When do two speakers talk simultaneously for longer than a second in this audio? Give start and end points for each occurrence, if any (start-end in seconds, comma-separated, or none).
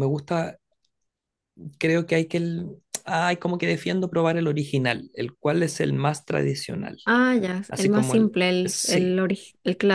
7.7-9.2